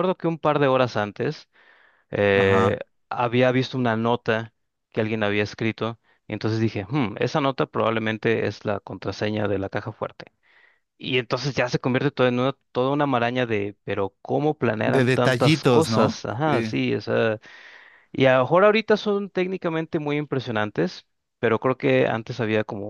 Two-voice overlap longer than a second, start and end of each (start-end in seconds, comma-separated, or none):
14.9-16.7